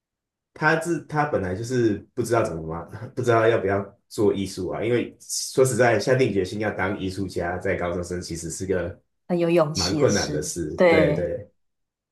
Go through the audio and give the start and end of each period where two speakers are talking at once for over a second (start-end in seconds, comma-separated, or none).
9.7-11.3